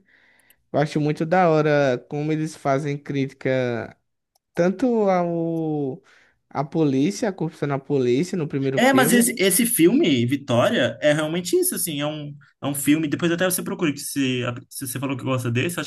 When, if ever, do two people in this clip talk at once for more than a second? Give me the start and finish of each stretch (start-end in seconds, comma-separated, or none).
none